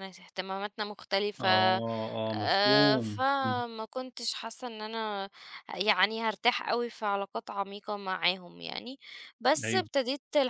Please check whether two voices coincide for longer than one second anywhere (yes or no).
yes